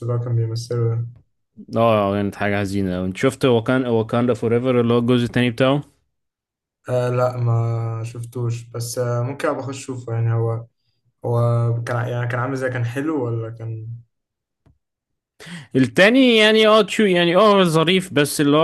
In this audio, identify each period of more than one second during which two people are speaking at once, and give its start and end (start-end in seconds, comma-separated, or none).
none